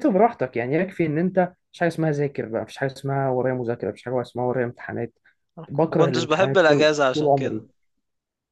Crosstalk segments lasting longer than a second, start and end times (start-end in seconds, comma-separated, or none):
5.9-7.6